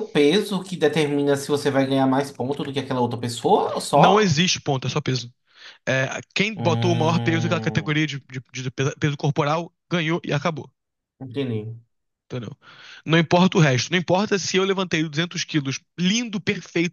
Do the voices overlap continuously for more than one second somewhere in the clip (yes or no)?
yes